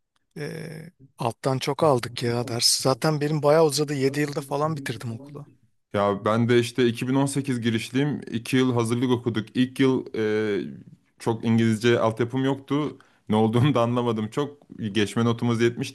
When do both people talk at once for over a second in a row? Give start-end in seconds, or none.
none